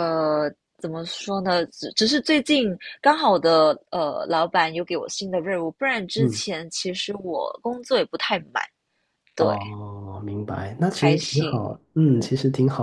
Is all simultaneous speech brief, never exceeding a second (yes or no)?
no